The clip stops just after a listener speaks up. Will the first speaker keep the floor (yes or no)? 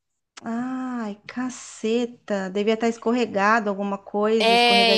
no